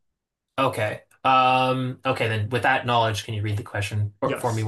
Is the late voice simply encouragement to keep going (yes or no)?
no